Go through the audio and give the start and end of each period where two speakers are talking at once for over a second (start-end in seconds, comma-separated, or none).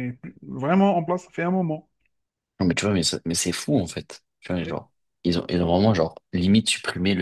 none